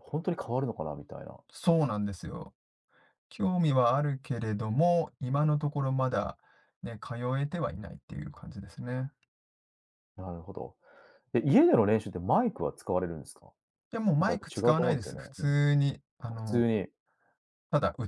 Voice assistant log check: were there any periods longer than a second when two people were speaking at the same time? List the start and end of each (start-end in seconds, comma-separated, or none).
14.2-15.5